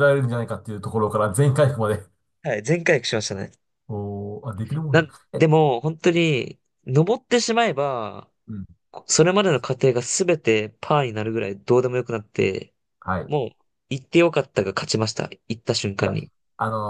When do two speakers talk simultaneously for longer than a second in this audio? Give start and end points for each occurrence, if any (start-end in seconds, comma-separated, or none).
none